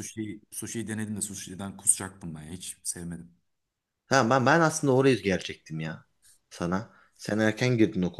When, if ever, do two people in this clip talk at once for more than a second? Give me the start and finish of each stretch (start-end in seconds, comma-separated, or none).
none